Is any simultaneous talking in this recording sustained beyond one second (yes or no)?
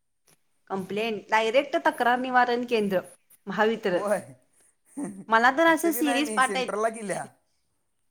yes